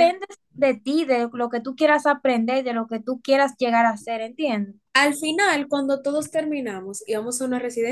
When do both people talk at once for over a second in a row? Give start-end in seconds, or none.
none